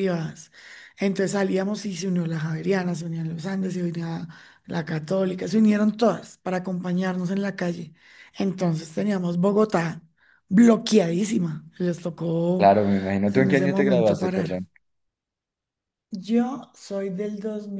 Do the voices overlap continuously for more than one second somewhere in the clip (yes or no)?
yes